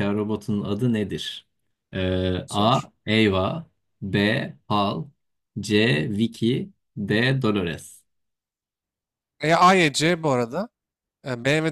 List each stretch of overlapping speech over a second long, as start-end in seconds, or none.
none